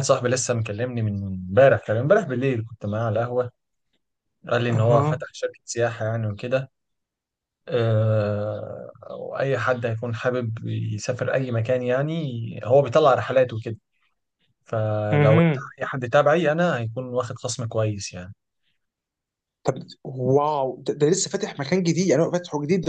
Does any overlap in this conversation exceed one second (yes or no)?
no